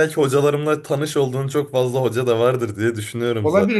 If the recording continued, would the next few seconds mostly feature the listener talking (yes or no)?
yes